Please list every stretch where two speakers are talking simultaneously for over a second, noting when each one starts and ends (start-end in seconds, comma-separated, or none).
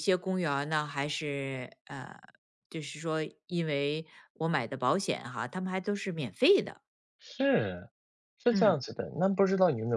none